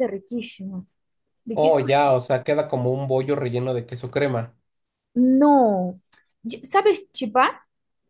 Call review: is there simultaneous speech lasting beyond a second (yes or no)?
no